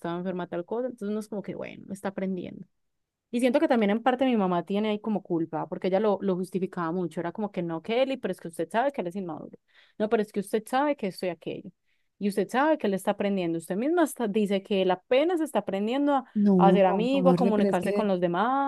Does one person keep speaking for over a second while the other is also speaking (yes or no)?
yes